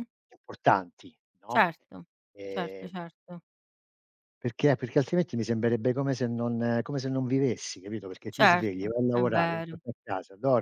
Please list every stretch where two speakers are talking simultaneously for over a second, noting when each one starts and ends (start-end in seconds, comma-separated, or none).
8.3-9.8